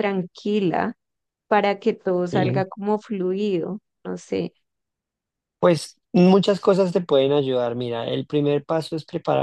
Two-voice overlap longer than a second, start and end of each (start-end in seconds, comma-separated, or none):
none